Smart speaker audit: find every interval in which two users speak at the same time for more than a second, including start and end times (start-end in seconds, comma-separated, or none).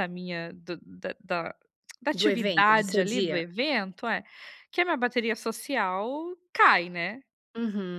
2.1-3.4